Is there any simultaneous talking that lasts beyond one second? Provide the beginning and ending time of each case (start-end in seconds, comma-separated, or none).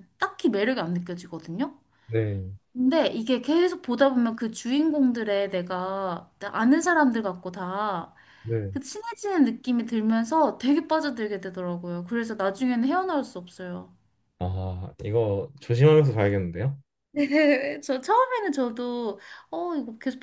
none